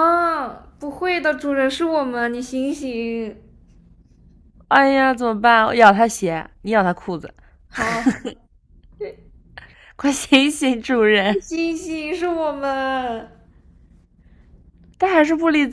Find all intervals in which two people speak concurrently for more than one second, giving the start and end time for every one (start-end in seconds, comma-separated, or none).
none